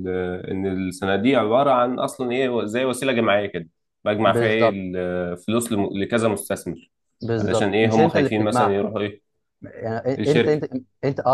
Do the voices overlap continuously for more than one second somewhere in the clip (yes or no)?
yes